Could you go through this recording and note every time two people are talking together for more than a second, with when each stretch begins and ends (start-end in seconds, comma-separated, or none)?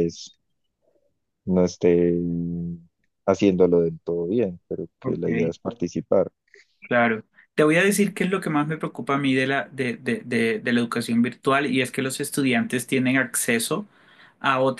none